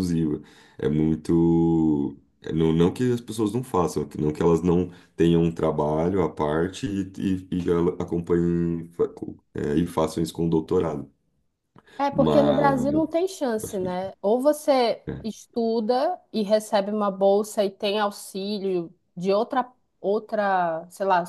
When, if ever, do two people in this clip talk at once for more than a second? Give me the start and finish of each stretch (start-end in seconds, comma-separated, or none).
none